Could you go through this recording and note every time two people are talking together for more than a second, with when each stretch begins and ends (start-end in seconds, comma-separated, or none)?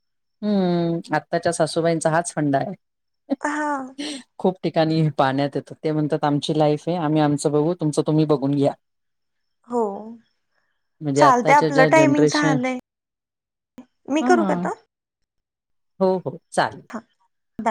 11.2-12.6